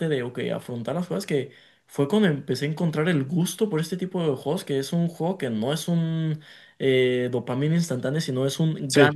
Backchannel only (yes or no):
yes